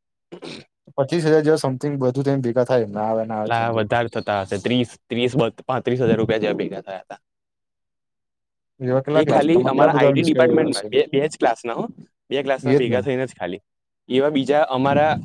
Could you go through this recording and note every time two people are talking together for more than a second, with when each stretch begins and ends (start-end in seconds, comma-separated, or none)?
9.2-10.9